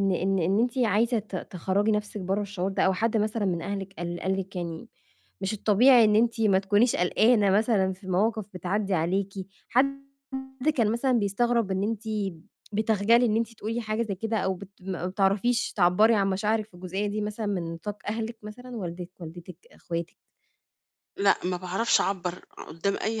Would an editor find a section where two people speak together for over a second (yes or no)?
no